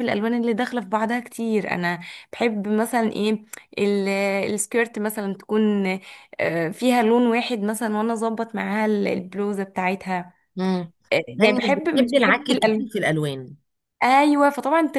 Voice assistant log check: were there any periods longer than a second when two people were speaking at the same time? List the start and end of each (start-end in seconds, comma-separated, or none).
11.4-12.8